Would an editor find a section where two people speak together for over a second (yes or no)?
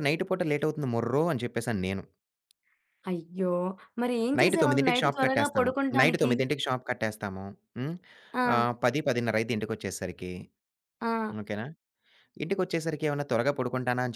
yes